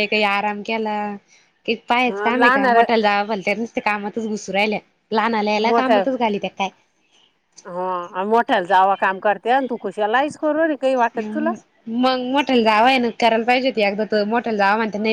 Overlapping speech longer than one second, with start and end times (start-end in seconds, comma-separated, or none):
none